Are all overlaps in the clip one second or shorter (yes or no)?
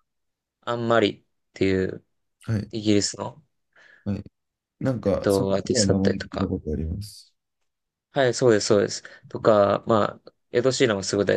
no